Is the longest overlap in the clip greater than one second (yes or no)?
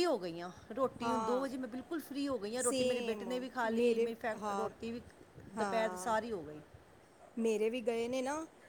yes